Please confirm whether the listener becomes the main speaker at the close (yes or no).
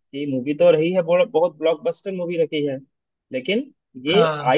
no